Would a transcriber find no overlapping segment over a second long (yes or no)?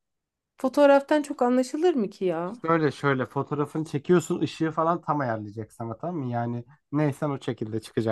yes